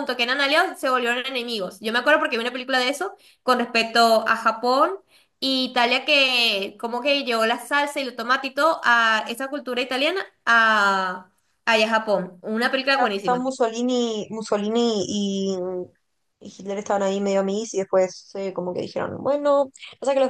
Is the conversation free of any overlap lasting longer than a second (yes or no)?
yes